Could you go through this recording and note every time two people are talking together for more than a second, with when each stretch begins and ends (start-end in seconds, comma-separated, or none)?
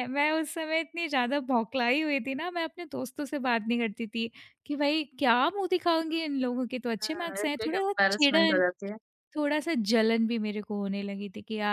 7.0-8.6